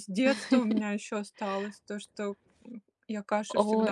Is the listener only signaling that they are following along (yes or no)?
no